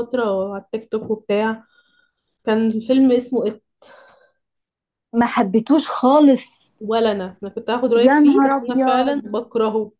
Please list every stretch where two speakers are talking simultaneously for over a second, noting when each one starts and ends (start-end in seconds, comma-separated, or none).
8.0-9.4